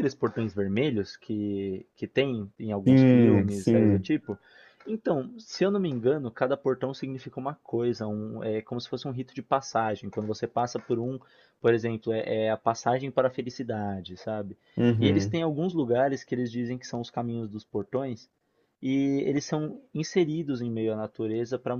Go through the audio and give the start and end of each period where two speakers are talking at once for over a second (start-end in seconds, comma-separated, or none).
2.9-4.1